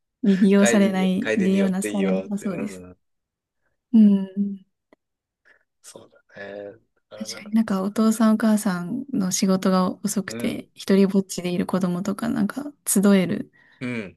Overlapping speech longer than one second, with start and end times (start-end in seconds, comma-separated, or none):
0.6-2.8